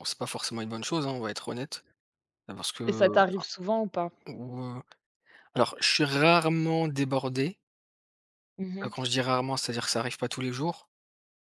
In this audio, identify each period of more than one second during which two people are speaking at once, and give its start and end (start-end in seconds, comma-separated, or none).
none